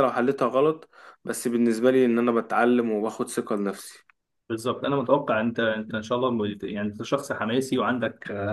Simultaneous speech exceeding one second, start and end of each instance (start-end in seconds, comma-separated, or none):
none